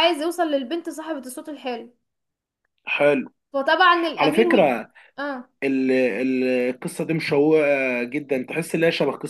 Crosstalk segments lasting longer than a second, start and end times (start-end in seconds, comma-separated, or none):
none